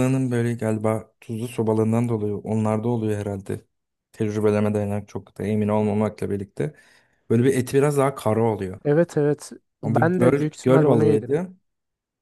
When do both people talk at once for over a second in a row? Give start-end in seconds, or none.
9.8-11.3